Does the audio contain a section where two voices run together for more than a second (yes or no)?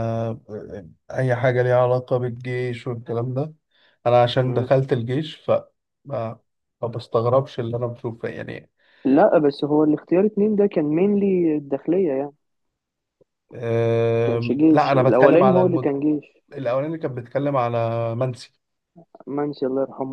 yes